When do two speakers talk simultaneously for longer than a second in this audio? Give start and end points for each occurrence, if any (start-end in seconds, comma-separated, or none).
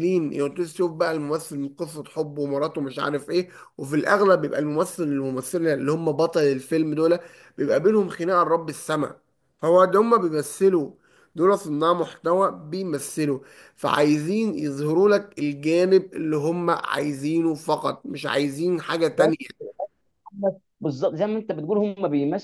none